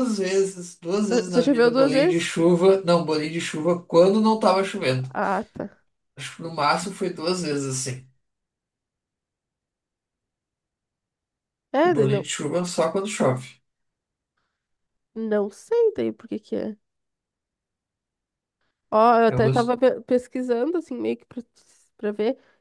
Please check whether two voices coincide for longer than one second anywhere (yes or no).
yes